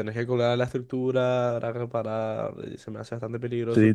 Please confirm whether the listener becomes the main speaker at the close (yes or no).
yes